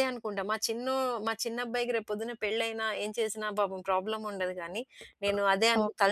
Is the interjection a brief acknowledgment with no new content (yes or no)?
yes